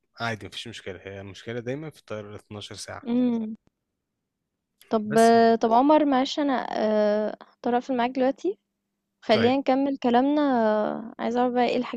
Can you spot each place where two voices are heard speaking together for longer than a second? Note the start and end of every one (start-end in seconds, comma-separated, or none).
none